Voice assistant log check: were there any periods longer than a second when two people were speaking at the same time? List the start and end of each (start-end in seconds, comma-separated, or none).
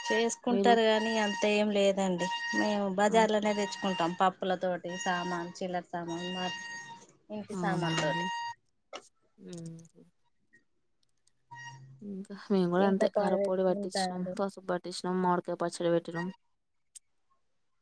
12.8-14.3